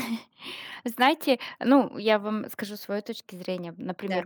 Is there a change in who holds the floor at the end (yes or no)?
no